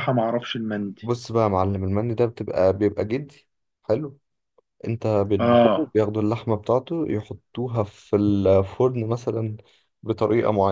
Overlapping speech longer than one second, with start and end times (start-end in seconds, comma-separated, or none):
none